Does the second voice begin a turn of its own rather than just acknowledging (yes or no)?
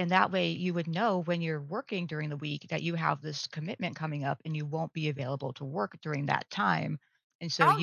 yes